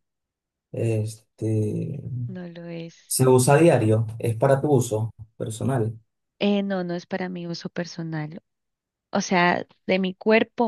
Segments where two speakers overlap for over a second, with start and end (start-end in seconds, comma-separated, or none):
none